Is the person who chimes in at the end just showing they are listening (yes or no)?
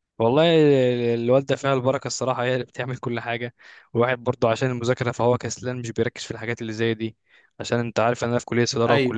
yes